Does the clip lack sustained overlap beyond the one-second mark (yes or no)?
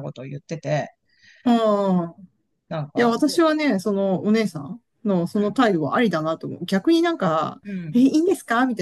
yes